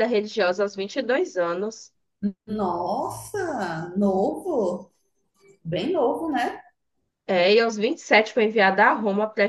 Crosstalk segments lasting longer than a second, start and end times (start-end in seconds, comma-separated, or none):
none